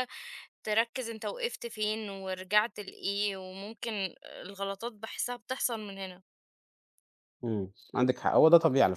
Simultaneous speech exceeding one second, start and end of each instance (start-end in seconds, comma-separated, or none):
none